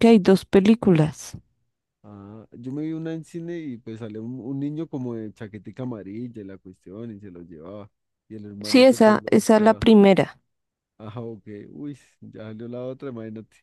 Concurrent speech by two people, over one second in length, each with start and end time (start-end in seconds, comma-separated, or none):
8.6-9.9